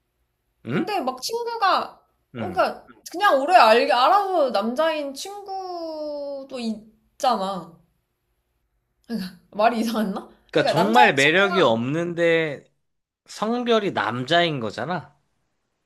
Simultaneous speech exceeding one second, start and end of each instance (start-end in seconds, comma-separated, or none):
10.5-11.8